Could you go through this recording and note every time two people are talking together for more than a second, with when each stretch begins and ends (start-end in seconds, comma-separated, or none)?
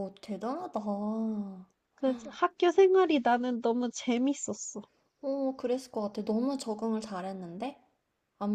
none